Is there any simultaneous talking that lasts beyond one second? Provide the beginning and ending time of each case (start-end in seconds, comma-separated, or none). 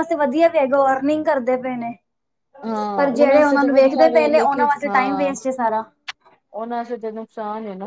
3.0-4.3